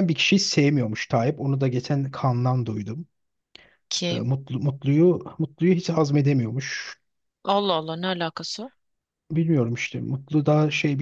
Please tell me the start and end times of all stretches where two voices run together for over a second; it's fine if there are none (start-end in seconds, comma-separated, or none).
none